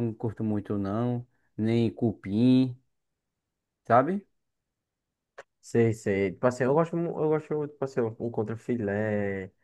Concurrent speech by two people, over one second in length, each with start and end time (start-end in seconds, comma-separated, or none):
none